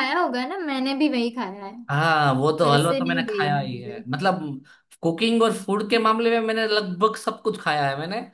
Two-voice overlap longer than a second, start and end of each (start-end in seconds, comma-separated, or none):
2.6-4.0